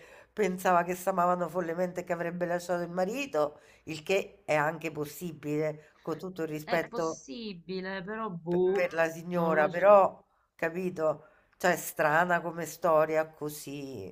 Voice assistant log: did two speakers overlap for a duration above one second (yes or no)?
yes